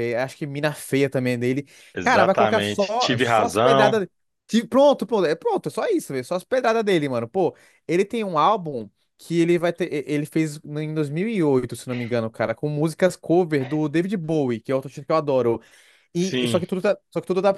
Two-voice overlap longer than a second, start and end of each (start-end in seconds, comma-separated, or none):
1.9-4.0